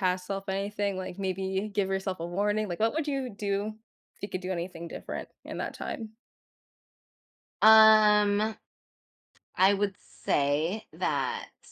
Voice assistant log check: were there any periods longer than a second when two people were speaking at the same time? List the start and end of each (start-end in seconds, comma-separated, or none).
none